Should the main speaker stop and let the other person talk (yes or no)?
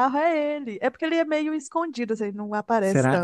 yes